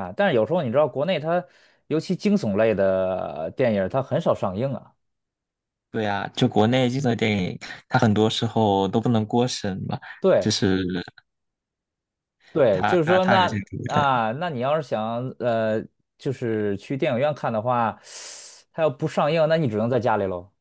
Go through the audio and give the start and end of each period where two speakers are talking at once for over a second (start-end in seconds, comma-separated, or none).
12.7-14.2